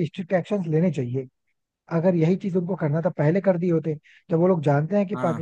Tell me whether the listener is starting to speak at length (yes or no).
no